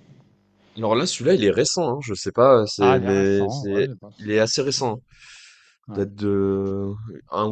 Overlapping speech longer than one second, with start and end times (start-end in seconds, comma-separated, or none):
2.8-4.8